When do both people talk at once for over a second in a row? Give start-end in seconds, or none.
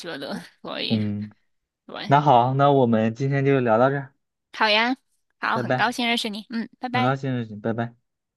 none